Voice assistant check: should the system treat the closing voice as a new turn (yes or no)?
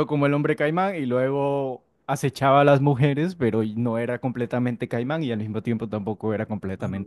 yes